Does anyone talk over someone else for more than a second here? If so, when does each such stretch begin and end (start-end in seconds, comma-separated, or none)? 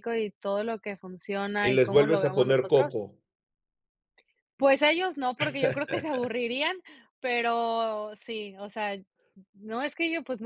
1.6-2.9